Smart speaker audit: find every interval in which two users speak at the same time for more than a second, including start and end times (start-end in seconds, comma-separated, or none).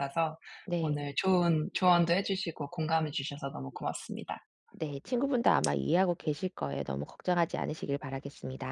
none